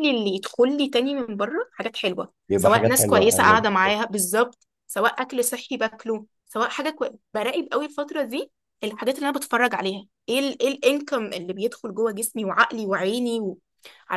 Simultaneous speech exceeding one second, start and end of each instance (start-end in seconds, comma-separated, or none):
2.5-4.0